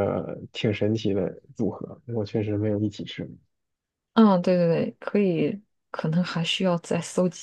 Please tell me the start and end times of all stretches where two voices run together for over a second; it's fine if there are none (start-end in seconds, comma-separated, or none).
none